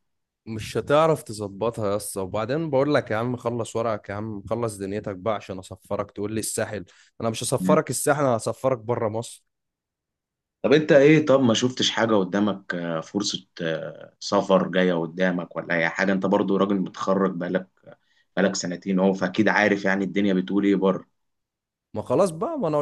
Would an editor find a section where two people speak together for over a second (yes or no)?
no